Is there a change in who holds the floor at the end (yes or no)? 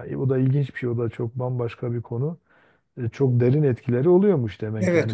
yes